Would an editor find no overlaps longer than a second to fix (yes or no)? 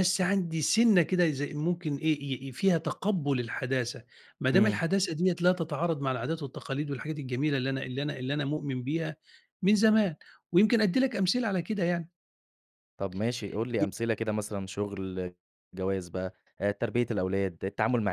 yes